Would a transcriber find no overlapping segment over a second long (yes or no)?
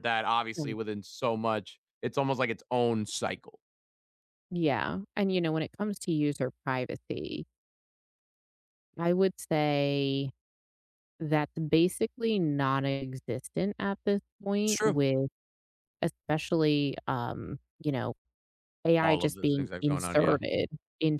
no